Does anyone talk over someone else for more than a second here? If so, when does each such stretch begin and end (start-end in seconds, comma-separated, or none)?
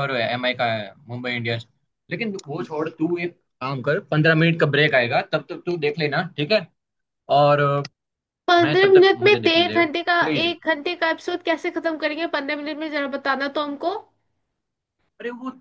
8.6-10.6